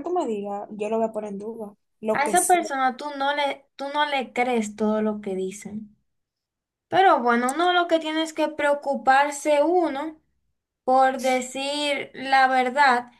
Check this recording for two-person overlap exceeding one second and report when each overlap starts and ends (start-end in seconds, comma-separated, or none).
none